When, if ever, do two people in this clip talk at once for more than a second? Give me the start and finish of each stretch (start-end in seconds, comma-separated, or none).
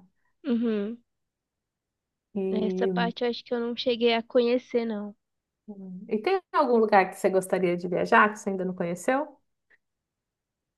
none